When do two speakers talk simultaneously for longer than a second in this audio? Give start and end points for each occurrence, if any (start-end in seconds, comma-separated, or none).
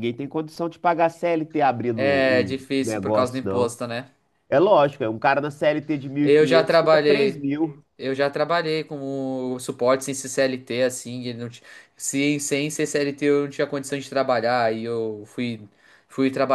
1.9-3.8, 6.2-7.4